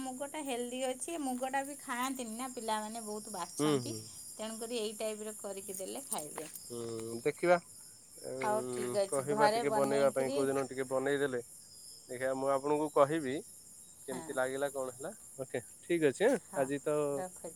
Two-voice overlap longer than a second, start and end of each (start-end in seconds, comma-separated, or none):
8.4-10.4